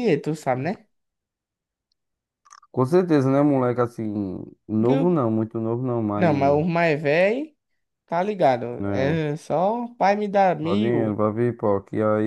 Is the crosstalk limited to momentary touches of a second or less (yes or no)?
yes